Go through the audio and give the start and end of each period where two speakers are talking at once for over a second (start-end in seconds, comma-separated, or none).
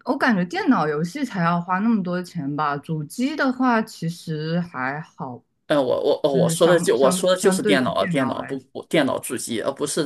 6.3-8.6